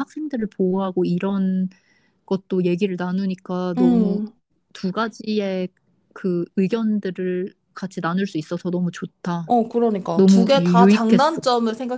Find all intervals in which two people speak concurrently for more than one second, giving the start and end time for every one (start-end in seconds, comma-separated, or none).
10.2-11.4